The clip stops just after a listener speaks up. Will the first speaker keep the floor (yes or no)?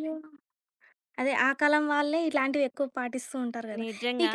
yes